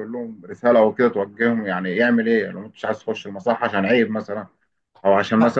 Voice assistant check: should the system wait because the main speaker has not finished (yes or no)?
yes